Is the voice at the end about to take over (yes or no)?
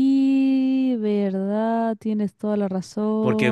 yes